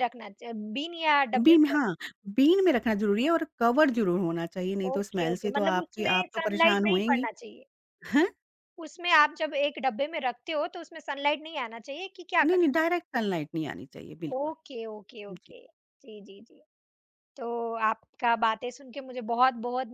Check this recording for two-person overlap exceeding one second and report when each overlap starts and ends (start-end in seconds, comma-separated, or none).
4.9-7.3